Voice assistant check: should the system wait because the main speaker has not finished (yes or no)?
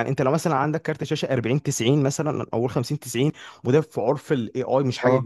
yes